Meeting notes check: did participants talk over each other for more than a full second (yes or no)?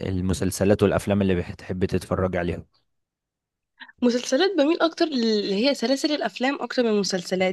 no